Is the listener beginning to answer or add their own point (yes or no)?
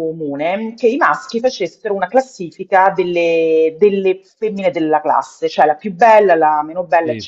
no